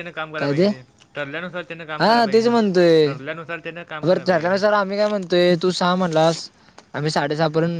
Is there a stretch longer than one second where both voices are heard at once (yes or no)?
no